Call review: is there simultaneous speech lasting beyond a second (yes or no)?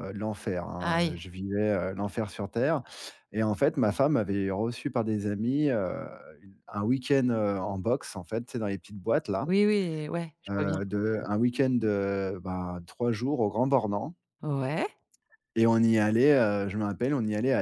no